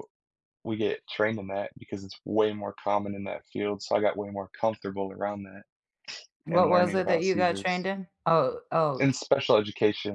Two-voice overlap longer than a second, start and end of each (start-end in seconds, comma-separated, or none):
6.5-7.8